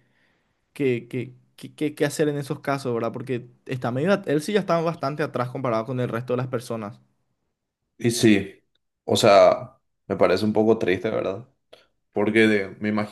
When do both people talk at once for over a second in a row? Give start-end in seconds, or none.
none